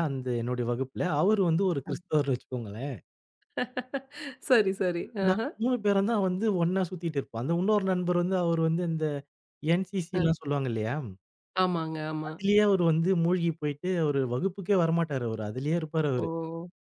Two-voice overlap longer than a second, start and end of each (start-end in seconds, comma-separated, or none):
none